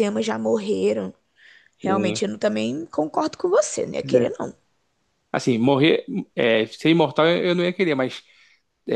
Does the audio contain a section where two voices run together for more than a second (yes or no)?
no